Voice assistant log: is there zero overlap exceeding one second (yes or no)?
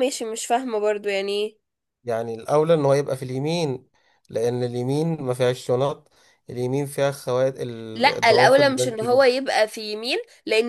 no